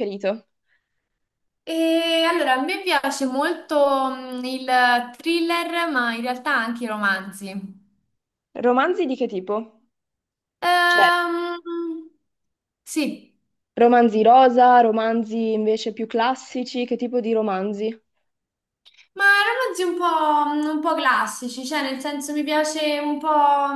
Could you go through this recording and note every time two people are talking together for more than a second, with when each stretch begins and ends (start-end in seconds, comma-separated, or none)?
none